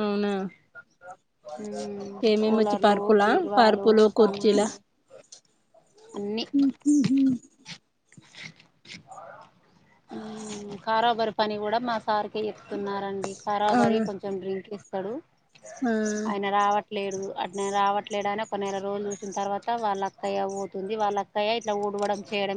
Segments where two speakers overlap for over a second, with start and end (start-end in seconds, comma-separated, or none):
2.3-4.7